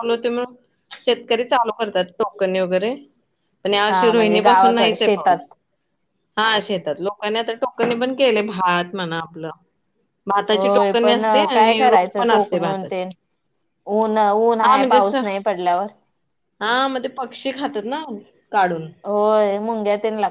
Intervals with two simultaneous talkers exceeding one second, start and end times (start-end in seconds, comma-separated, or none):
3.9-5.5, 10.5-13.0